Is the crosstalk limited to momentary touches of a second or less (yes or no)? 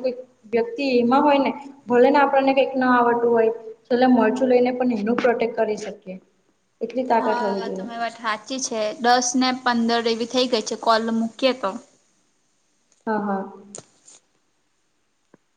yes